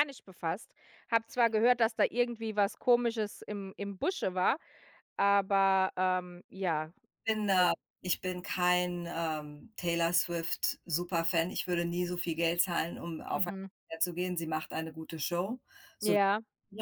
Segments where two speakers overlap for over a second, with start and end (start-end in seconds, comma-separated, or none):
none